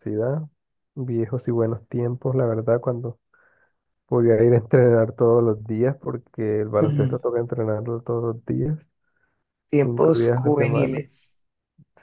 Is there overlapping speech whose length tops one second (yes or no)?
yes